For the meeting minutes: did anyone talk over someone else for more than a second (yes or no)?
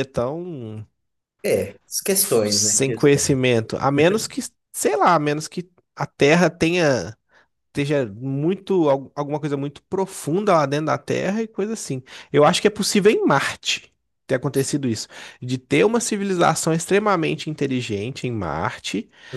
yes